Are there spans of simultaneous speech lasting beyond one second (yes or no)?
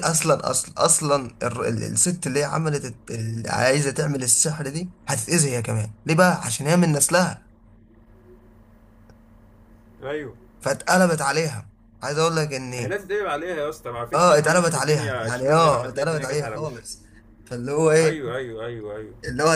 yes